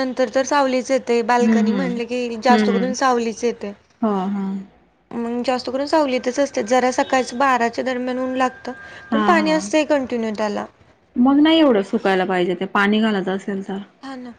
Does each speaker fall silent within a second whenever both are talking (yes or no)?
no